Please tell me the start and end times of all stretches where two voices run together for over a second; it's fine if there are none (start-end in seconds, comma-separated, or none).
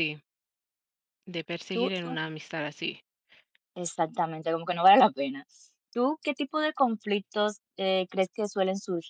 none